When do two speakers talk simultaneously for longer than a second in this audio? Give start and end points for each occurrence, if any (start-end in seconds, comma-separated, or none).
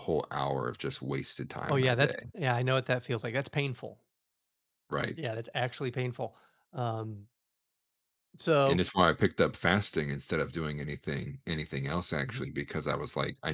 none